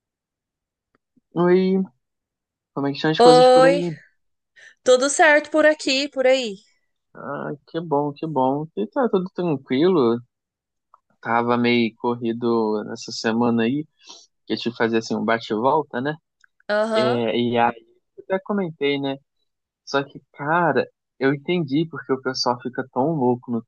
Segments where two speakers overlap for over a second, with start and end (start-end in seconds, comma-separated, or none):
none